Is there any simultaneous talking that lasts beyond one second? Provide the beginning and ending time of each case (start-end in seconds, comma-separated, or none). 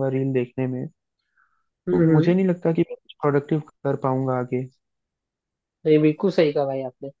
none